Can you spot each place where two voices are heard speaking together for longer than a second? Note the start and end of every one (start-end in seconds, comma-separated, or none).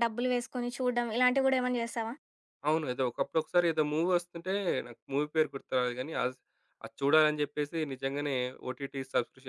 none